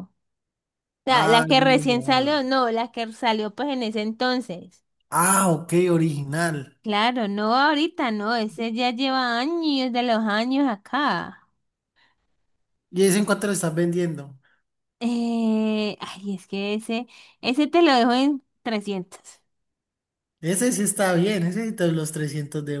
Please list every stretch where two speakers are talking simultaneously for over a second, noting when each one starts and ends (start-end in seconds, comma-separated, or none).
1.1-2.4